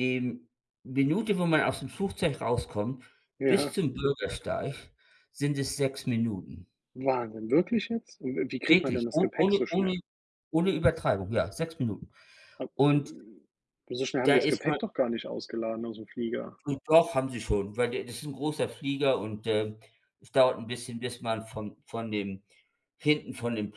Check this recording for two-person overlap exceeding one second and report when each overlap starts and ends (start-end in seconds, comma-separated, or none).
8.7-9.9